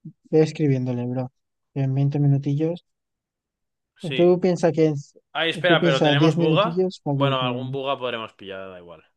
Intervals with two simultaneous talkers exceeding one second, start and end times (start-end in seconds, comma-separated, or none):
5.7-7.5